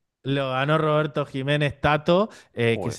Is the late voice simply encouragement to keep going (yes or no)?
yes